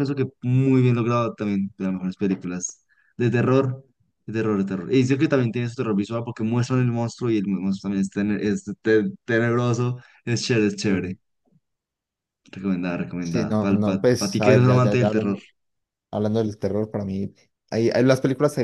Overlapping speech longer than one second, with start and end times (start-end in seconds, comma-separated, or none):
13.2-15.4